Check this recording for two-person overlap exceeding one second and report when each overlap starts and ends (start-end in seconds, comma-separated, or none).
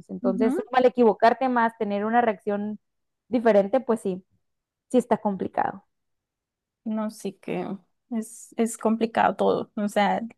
none